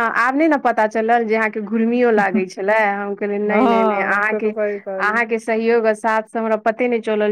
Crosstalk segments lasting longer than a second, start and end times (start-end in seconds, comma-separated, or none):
3.5-5.2